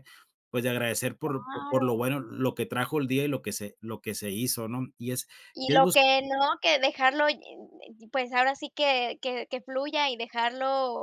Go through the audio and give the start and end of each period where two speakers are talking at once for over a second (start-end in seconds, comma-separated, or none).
none